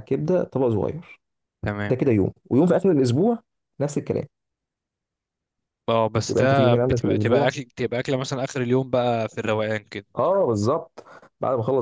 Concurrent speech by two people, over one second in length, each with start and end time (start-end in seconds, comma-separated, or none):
6.3-7.5